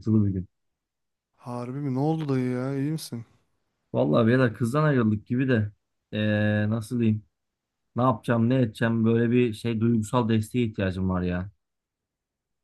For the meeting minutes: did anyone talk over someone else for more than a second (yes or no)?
no